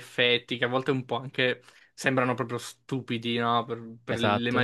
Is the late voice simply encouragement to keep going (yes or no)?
yes